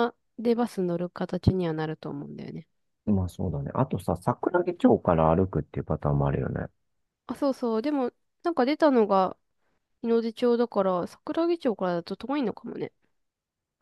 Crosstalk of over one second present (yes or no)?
no